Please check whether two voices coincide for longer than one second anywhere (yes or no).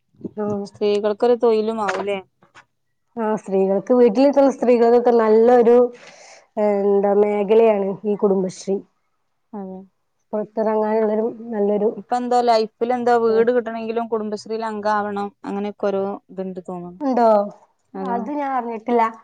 no